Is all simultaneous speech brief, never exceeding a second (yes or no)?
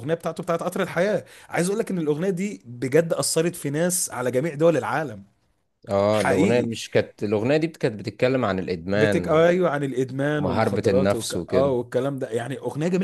no